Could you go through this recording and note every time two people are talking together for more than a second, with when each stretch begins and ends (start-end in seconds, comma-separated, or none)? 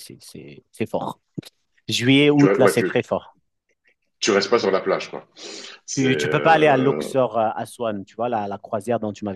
5.9-7.1